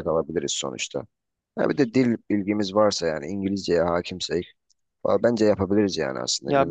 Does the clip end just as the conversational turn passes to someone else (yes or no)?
yes